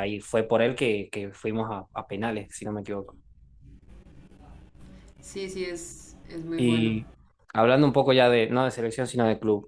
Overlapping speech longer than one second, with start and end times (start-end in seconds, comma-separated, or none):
none